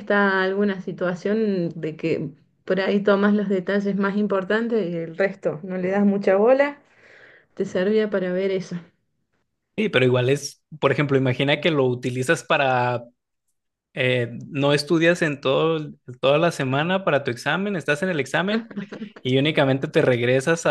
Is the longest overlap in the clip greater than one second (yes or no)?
no